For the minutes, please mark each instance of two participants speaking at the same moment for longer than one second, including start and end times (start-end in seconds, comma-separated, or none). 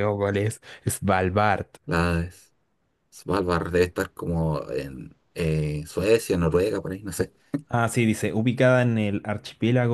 none